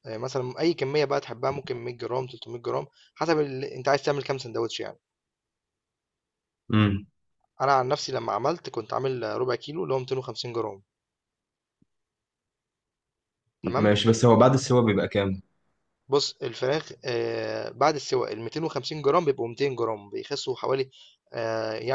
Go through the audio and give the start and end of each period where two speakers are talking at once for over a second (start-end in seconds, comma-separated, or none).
none